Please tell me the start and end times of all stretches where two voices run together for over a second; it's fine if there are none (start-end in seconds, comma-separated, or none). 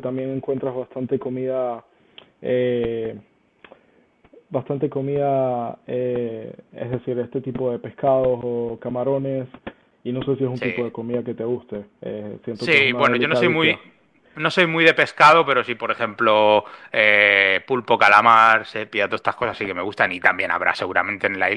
12.5-13.8